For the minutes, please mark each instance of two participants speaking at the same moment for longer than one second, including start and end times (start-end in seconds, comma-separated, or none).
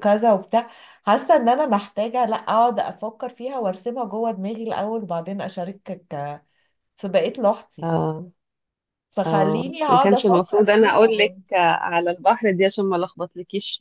9.2-11.0